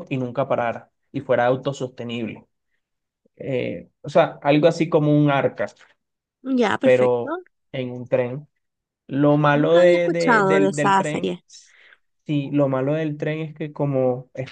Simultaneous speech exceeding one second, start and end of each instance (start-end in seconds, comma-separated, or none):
9.5-11.4